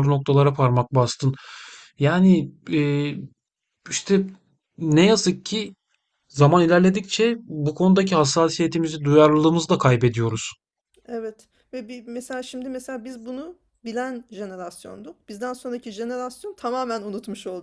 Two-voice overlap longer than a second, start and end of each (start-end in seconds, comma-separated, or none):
none